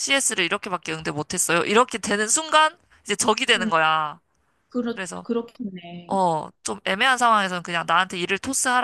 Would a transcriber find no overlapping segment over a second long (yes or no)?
yes